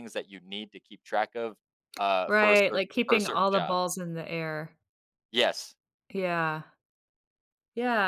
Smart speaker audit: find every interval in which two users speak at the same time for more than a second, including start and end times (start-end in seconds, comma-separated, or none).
2.3-3.8